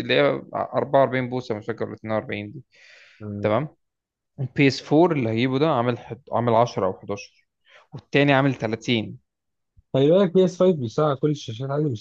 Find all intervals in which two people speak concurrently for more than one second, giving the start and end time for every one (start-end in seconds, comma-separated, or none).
none